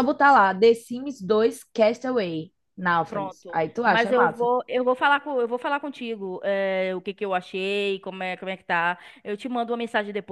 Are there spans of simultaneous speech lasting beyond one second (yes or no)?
yes